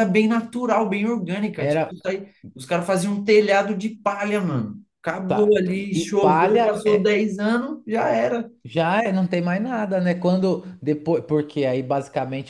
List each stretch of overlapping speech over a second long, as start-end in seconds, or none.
5.3-7.2